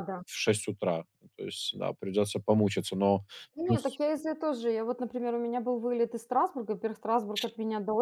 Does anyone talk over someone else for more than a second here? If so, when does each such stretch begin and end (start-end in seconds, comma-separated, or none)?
none